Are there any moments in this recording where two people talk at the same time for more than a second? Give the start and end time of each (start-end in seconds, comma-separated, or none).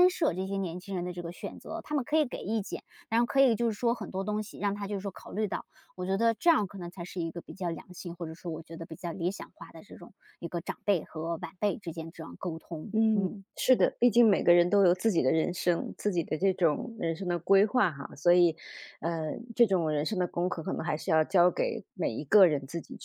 none